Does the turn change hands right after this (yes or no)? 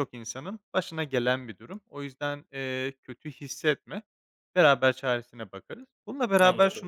no